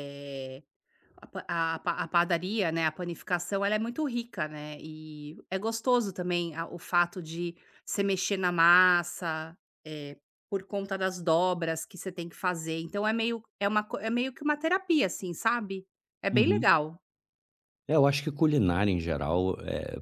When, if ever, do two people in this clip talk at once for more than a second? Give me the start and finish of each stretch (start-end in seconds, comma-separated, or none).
none